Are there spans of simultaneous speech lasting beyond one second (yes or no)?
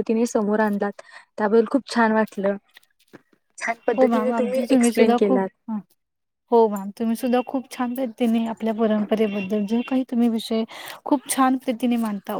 yes